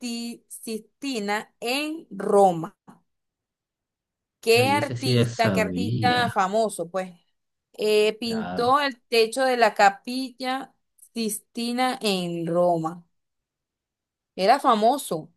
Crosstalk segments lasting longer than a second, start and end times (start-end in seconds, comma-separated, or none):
4.5-6.2